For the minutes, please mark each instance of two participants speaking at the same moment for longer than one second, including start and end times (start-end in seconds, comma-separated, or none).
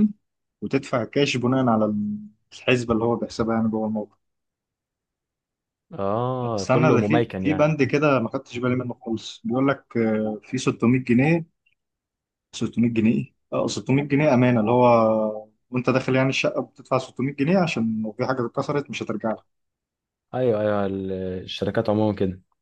6.4-7.7